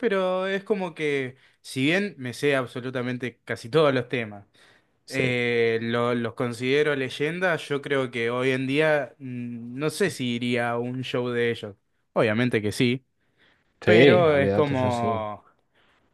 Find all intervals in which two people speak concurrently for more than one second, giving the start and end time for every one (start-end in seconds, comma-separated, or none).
13.8-15.1